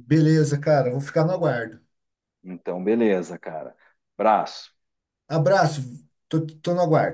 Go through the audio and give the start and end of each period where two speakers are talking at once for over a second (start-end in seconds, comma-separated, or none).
none